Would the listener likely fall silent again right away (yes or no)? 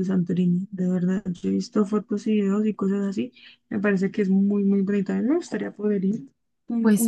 no